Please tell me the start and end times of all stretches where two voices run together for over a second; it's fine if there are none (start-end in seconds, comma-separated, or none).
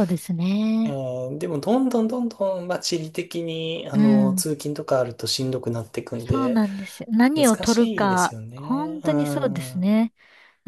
7.3-9.9